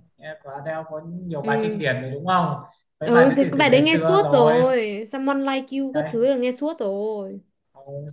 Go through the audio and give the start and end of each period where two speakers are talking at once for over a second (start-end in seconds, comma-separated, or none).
3.0-4.6